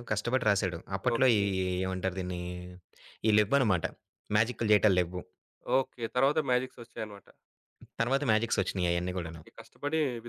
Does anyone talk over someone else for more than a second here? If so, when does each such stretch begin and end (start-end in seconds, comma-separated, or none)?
none